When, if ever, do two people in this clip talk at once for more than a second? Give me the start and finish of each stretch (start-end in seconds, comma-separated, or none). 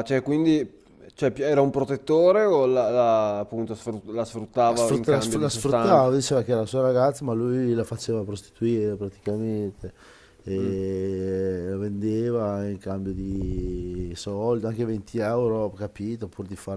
4.6-6.1